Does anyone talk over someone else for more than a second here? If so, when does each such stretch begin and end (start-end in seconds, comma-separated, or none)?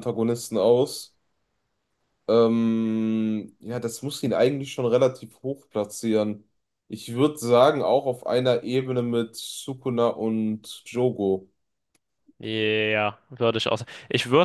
none